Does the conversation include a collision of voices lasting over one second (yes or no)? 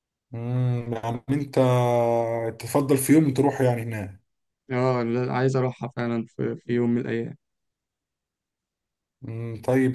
no